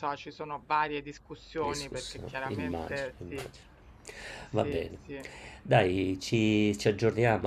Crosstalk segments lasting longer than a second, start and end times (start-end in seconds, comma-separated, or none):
1.6-3.5